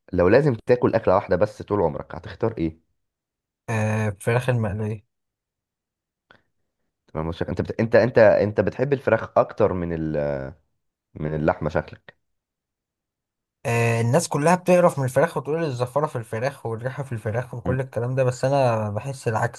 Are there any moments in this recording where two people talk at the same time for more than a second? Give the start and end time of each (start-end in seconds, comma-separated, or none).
none